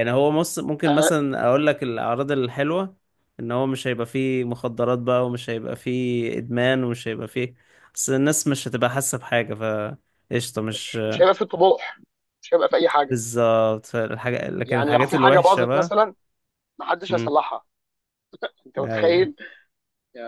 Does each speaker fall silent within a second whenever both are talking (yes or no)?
no